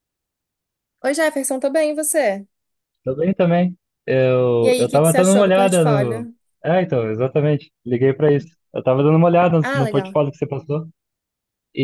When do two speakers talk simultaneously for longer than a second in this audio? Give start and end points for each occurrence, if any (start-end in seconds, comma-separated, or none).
4.6-6.3